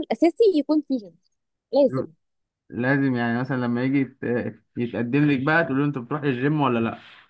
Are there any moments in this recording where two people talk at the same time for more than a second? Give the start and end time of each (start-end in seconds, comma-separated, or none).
none